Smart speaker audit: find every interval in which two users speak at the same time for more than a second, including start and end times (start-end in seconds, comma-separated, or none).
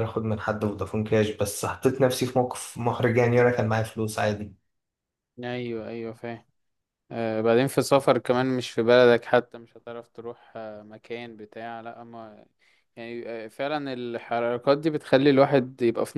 none